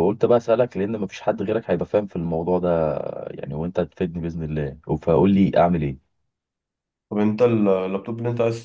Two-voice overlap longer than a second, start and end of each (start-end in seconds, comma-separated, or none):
none